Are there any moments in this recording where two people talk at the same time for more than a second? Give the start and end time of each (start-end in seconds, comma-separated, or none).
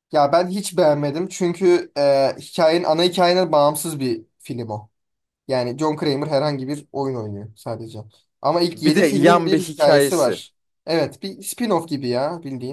8.7-10.4